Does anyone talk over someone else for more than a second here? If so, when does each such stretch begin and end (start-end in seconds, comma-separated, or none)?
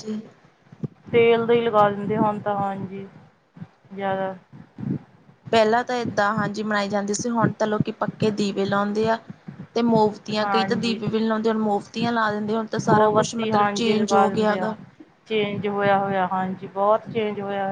12.9-14.7